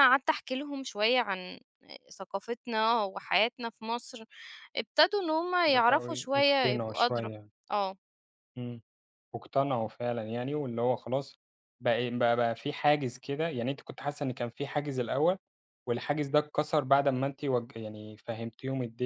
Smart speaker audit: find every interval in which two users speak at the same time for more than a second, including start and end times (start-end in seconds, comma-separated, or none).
5.7-7.3